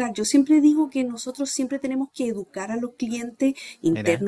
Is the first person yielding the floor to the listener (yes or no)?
no